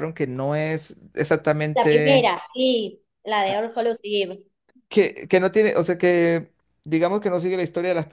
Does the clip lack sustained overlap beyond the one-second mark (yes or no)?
yes